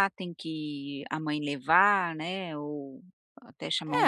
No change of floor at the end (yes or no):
no